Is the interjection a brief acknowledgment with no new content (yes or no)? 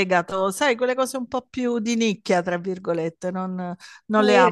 no